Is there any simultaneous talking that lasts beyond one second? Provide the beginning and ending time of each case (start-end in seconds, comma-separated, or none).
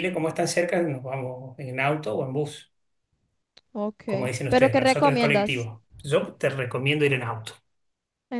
4.5-5.7